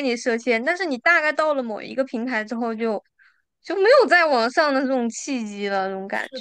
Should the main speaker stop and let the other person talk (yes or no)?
yes